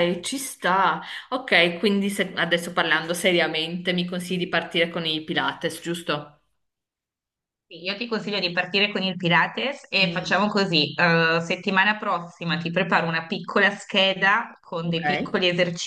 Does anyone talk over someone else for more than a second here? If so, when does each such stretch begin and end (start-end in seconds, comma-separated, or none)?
none